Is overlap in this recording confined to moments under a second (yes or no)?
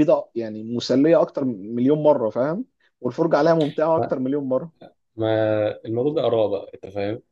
yes